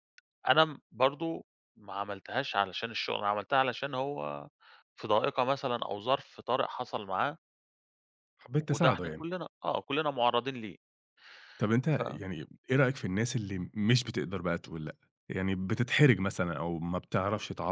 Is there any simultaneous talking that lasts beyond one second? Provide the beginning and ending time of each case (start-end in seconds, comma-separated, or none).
none